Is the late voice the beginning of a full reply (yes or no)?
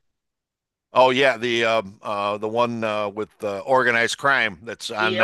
yes